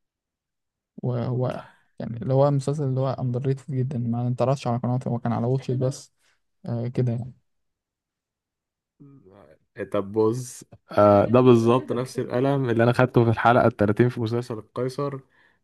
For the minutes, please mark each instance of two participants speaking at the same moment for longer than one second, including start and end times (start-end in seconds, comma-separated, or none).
none